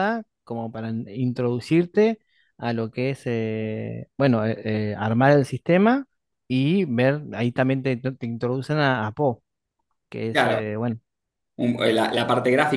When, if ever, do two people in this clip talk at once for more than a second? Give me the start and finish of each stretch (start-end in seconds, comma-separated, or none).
none